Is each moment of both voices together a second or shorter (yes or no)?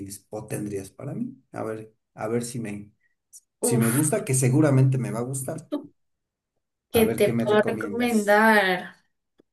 no